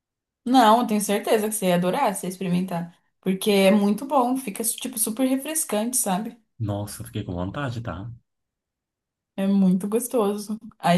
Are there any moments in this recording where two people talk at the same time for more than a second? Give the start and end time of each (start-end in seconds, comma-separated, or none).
none